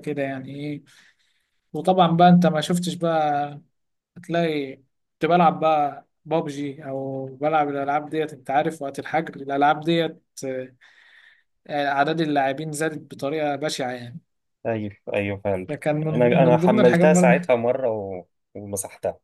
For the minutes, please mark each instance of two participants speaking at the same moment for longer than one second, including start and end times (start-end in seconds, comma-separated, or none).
16.1-17.5